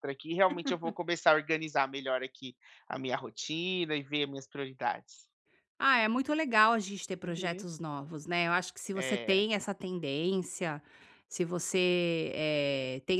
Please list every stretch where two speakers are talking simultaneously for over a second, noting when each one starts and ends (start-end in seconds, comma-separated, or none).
none